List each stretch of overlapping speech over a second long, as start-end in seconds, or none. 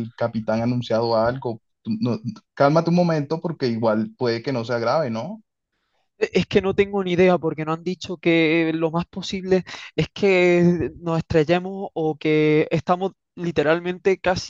none